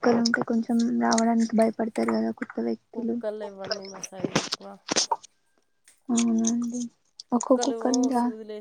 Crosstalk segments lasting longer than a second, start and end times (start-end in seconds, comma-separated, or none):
none